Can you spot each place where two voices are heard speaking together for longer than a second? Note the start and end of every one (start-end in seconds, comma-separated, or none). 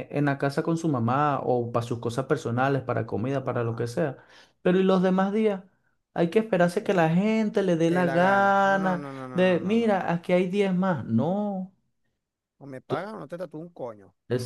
7.9-10.0